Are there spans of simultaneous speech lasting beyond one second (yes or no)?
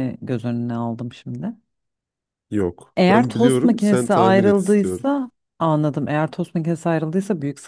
yes